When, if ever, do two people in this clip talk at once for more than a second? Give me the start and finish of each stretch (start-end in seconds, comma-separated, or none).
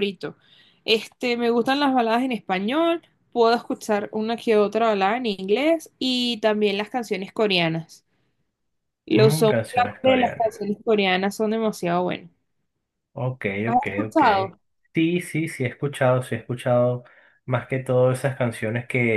9.2-10.6